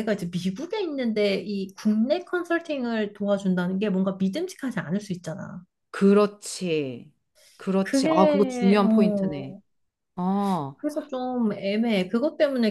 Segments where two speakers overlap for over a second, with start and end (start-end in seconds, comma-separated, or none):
7.8-9.5